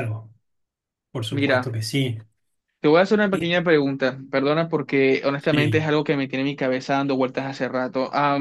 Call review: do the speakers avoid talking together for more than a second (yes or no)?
yes